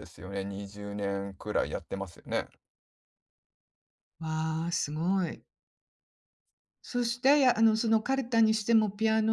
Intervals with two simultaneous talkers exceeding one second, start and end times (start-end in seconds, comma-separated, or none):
none